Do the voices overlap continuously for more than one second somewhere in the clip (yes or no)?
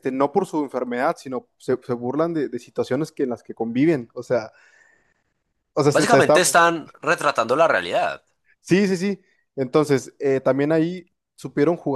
no